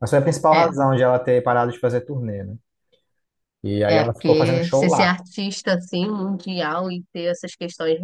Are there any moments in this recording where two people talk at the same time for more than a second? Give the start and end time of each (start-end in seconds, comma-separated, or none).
3.9-5.2